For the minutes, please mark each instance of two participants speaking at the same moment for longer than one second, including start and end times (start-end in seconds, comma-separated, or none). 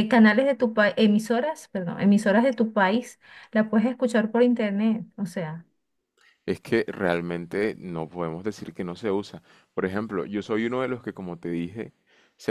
none